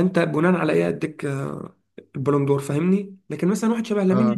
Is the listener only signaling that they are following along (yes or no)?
yes